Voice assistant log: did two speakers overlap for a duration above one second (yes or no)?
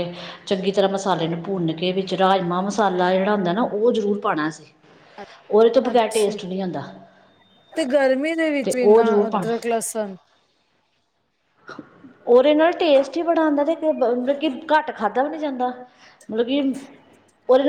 no